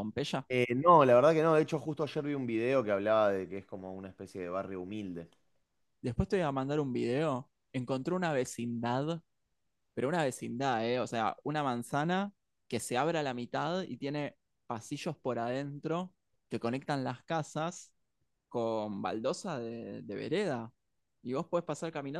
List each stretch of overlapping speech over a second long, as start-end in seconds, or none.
none